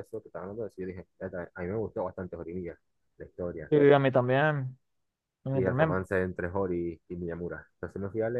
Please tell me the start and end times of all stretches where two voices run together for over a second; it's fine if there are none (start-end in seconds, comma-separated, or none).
none